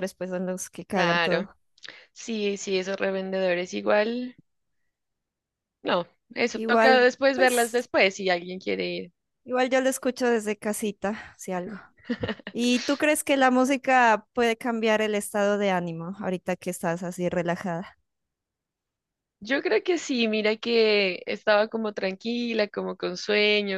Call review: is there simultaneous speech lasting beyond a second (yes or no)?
yes